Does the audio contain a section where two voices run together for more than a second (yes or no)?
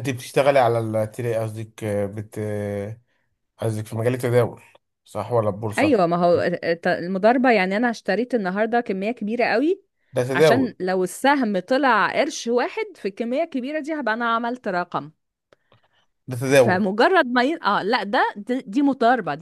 no